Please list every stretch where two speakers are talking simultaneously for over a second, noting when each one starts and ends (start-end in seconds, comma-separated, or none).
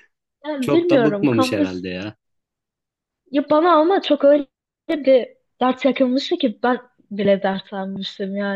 0.6-1.9